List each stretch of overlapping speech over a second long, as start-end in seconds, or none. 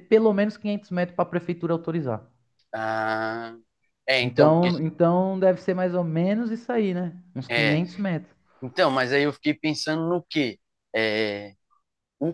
none